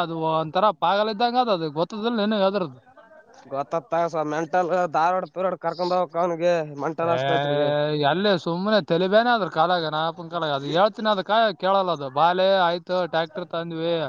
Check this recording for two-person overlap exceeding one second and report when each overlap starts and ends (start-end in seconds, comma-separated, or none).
none